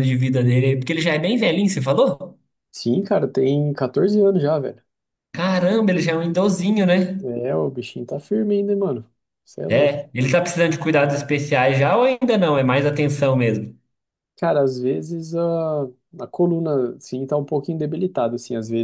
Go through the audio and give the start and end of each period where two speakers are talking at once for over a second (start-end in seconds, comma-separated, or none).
none